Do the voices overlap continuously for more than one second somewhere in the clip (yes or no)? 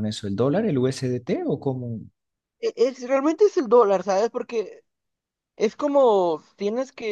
no